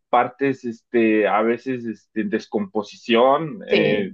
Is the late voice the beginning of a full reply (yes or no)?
no